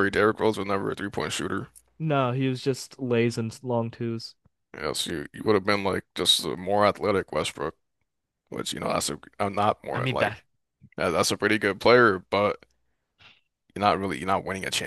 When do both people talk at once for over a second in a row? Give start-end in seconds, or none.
none